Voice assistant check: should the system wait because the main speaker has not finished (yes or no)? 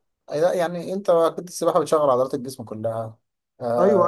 no